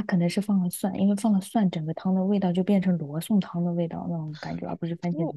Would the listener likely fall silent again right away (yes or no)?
no